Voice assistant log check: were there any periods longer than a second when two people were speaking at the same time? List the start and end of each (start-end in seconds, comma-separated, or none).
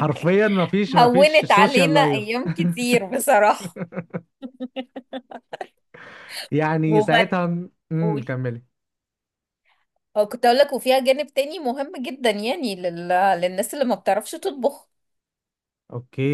1.0-2.2